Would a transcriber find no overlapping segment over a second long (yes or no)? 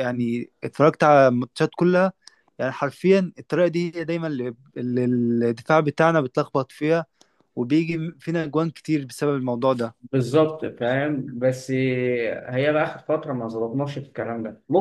yes